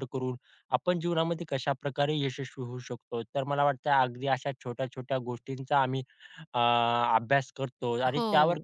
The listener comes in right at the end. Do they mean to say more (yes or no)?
no